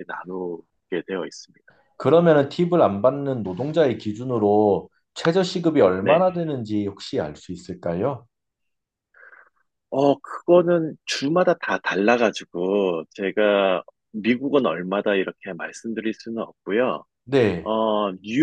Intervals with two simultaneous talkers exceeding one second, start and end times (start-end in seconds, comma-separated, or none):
none